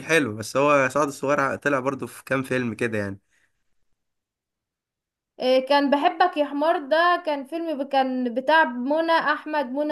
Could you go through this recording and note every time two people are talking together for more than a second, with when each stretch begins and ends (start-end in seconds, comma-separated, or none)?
none